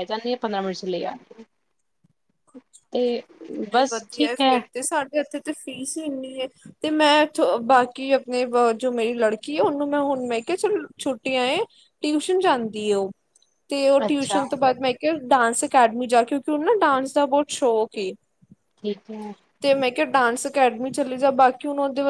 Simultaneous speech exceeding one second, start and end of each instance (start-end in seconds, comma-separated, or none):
none